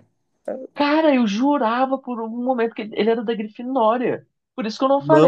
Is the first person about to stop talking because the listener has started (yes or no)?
no